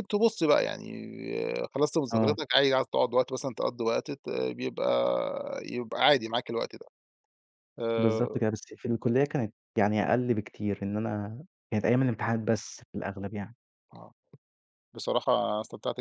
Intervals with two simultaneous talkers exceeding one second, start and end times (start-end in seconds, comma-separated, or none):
none